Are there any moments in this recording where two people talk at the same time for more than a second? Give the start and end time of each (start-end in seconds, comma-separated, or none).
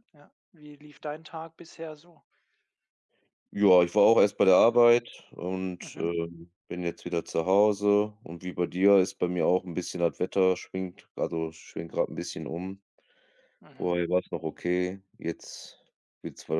none